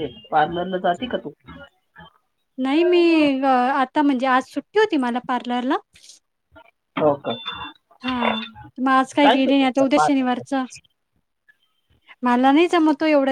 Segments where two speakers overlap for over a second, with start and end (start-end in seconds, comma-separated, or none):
8.8-10.5